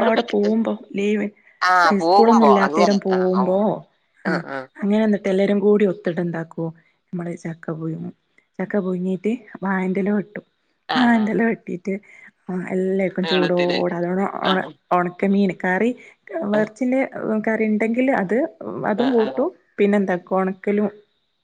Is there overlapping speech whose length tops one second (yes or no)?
yes